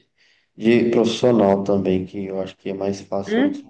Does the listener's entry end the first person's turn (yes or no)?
yes